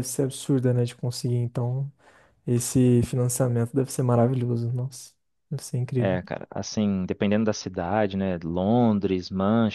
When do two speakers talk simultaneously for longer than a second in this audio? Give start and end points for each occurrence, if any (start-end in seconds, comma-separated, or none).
none